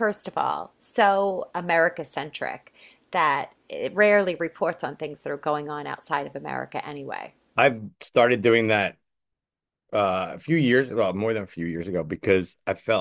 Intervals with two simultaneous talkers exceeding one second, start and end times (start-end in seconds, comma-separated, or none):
none